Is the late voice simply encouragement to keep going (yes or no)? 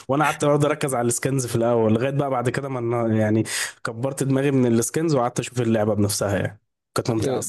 no